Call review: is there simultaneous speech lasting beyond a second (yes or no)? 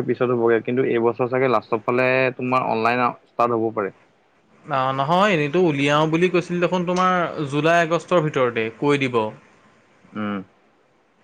no